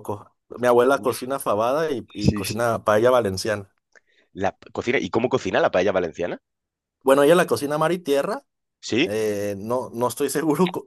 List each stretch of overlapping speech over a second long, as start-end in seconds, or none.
none